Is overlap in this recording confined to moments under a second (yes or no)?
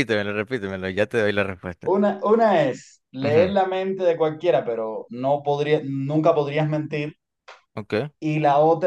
yes